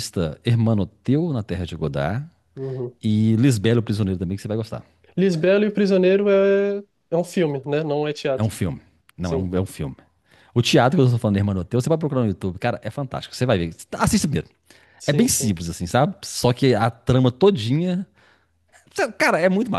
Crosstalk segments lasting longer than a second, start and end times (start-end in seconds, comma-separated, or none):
none